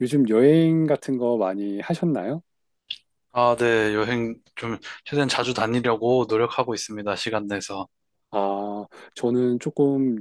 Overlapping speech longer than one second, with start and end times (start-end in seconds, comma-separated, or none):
none